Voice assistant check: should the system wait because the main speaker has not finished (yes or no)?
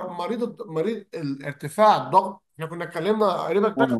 no